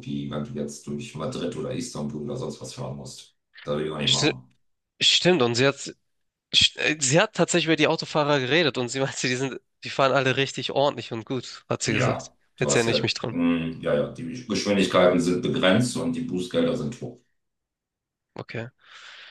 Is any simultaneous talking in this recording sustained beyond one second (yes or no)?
yes